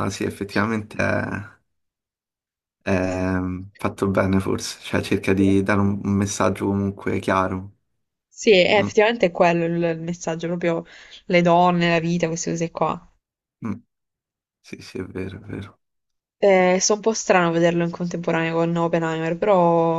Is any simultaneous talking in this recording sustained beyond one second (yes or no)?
no